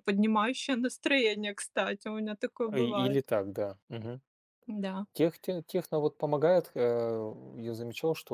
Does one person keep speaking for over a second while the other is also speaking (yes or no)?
no